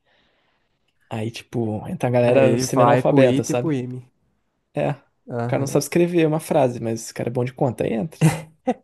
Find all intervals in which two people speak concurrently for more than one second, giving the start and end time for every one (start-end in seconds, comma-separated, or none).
2.2-3.7